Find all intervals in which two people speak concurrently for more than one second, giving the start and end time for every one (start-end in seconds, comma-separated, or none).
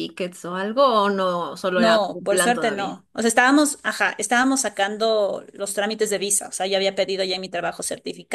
1.8-3.0